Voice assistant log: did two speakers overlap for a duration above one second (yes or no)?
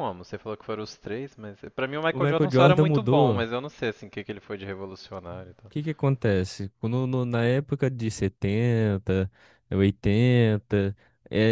yes